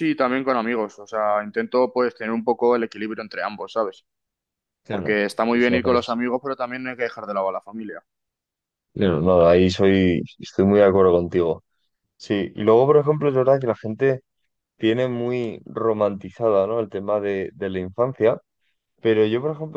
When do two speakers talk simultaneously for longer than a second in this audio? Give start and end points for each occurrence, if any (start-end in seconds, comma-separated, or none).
4.9-6.2